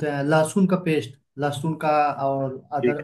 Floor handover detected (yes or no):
no